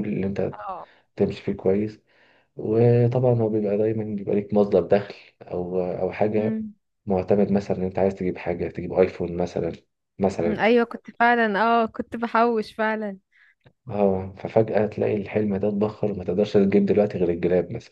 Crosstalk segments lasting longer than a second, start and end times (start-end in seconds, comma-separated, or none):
none